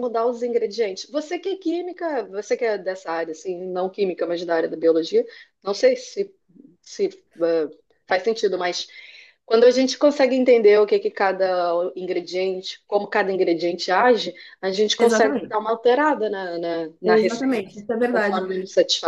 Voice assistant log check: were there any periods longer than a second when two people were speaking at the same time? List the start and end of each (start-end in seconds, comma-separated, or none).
17.0-18.5